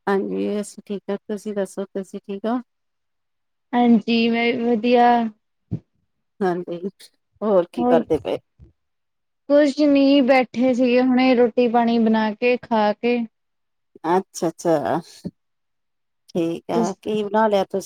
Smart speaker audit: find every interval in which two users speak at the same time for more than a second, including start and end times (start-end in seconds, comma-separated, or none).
none